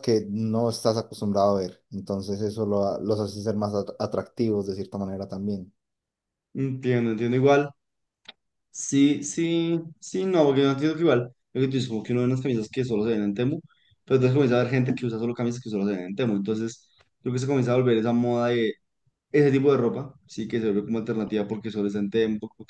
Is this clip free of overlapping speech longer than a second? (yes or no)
yes